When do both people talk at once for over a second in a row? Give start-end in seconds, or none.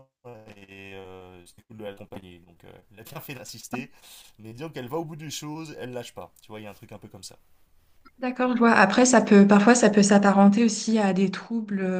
none